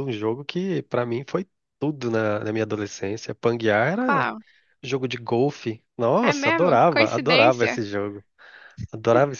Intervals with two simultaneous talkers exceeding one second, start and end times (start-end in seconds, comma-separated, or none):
6.2-7.8